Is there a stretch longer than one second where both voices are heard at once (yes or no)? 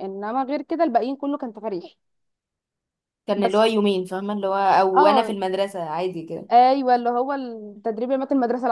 no